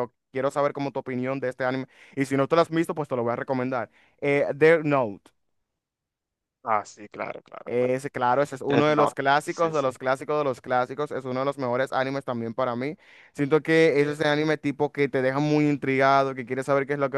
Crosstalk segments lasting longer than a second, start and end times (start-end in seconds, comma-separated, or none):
8.7-9.9